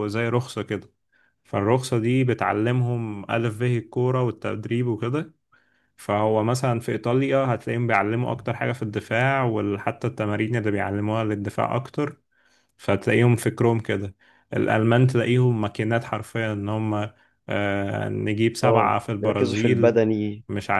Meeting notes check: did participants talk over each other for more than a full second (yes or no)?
yes